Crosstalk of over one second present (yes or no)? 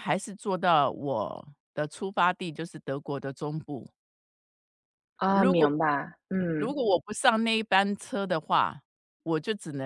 no